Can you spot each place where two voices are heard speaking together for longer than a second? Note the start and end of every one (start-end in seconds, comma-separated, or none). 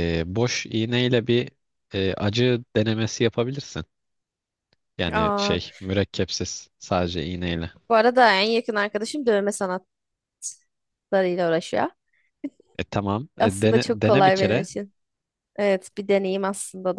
13.4-14.7